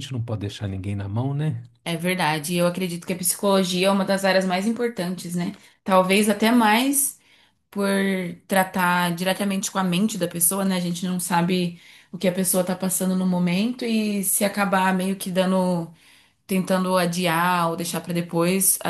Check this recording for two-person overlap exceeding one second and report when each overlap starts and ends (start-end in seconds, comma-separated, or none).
none